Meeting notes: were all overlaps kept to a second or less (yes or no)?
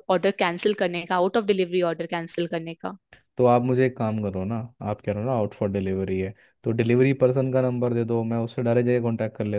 yes